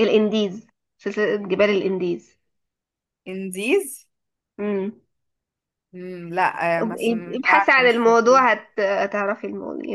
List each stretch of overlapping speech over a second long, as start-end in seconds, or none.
6.8-8.4